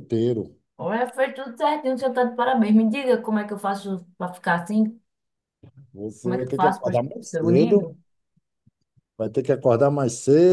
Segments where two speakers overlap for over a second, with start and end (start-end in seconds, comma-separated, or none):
6.2-7.9